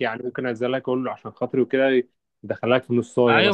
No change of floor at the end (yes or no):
no